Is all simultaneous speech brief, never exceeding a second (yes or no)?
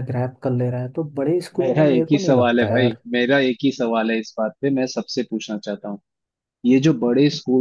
no